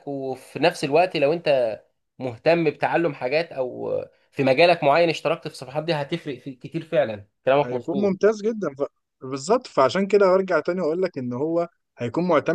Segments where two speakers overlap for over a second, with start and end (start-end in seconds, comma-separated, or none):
none